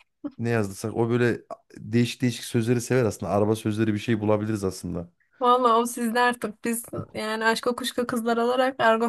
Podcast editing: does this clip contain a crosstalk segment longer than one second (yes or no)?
no